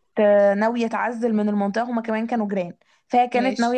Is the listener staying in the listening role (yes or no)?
yes